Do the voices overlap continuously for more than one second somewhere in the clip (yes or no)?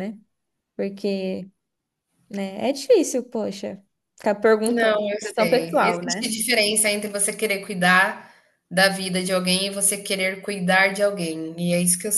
yes